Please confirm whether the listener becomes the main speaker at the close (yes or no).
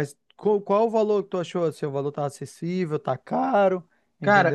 yes